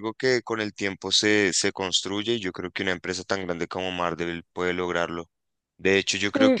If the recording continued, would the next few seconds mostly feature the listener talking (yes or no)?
no